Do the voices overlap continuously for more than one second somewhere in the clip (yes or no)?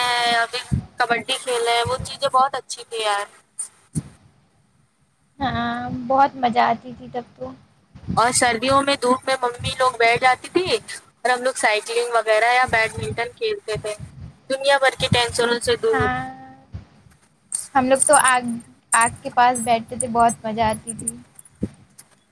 no